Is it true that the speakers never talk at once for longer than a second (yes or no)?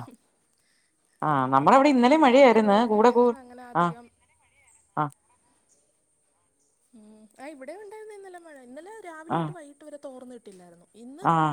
no